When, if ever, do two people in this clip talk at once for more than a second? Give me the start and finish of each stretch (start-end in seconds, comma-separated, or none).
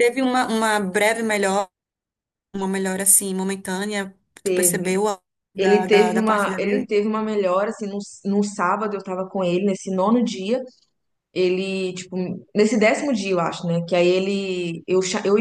5.6-6.9